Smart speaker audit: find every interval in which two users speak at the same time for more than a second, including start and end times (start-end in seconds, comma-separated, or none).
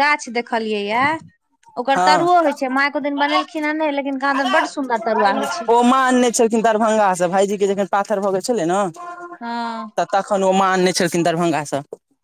2.0-3.5